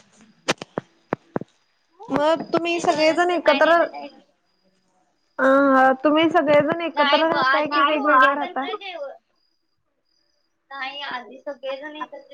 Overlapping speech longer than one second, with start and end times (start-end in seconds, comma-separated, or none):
2.1-3.8, 7.0-8.7